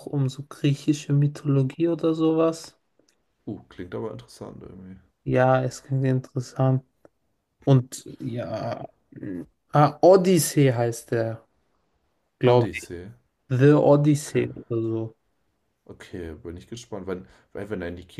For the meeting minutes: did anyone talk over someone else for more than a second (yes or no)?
no